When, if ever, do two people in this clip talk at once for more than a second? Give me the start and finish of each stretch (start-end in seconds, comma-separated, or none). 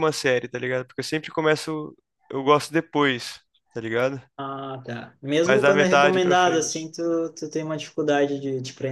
5.5-6.9